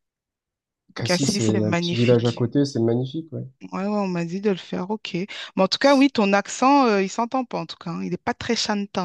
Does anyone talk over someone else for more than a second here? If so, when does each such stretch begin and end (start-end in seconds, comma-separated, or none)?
1.0-2.5